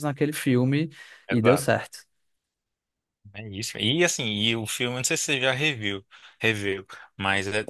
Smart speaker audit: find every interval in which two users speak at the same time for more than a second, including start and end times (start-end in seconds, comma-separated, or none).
none